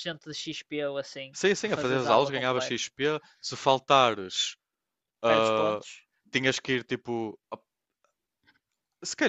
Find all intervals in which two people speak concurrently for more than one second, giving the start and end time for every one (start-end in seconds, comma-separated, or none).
1.3-2.8